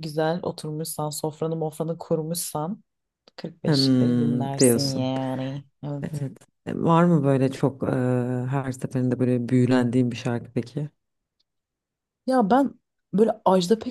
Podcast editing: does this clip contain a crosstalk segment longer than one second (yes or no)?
yes